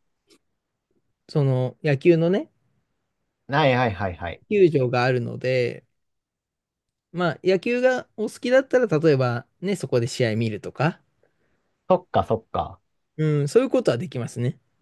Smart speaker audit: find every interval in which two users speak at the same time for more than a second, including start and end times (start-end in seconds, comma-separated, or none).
none